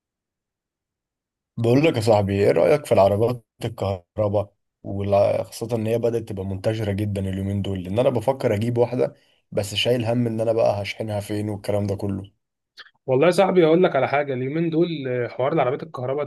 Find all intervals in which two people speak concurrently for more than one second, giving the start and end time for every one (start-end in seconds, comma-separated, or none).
none